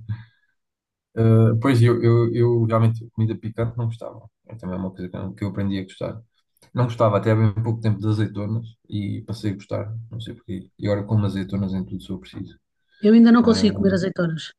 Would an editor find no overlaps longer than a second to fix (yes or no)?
yes